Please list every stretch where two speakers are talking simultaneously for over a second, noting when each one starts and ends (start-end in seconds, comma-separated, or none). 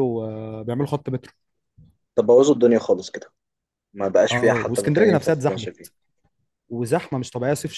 4.3-5.9